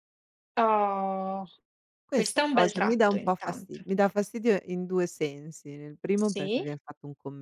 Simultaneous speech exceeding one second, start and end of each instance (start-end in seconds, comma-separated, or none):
2.1-3.8